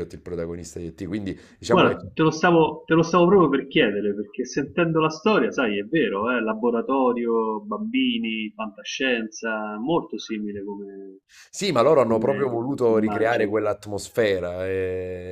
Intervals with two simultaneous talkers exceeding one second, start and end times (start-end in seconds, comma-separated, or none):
12.0-13.6